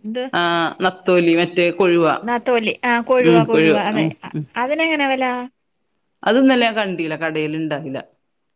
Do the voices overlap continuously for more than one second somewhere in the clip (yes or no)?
no